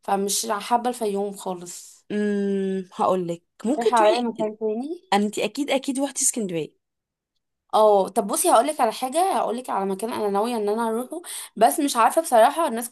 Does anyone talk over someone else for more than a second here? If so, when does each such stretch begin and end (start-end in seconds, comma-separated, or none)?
none